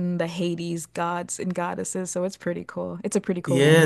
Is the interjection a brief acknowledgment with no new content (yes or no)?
no